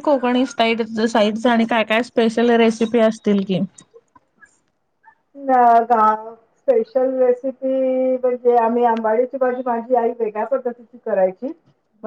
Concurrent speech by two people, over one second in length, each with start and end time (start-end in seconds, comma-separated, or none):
none